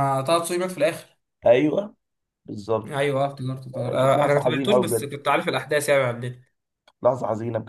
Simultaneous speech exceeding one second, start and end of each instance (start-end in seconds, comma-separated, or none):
3.9-5.1